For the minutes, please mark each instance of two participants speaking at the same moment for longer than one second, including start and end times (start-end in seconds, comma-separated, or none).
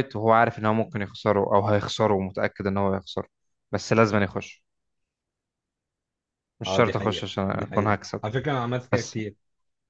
6.7-8.2